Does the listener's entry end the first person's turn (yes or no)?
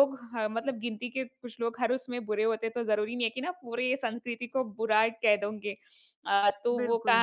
no